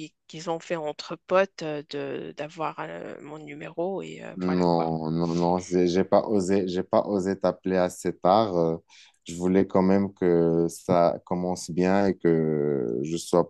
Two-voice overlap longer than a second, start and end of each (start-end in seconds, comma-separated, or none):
none